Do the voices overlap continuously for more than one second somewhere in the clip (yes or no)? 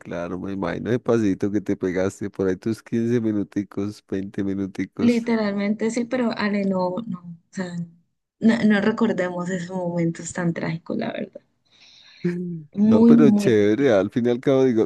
yes